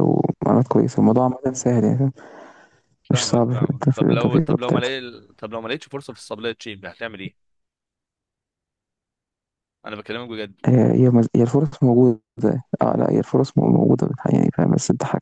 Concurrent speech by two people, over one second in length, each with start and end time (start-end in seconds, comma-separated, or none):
3.1-4.9